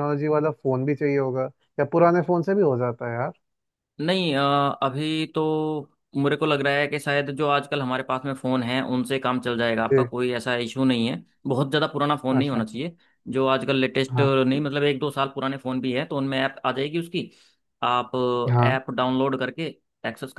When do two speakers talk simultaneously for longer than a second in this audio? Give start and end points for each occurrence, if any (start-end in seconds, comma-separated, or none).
none